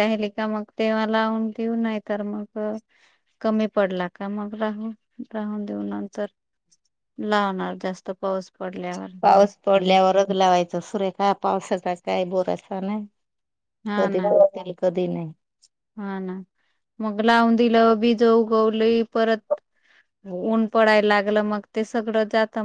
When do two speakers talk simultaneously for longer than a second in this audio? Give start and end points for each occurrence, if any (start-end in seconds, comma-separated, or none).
none